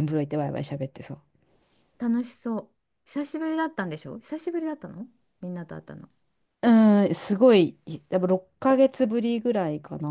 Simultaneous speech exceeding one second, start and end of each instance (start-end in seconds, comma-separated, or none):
none